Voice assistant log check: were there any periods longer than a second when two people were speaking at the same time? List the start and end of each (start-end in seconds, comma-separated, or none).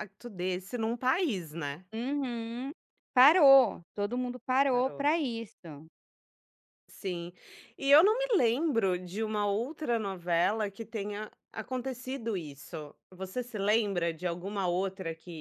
none